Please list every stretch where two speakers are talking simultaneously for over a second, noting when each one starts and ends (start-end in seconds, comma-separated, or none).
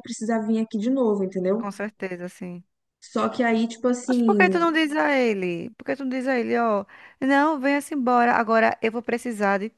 none